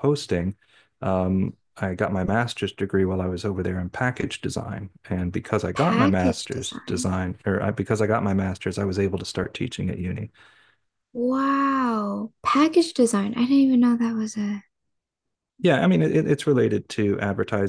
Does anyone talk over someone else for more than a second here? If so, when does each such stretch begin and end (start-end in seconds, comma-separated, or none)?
5.8-7.1